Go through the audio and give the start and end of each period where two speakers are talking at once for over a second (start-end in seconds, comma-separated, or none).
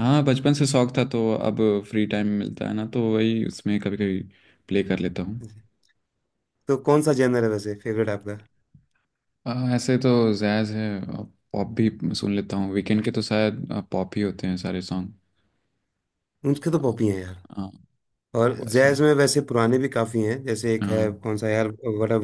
none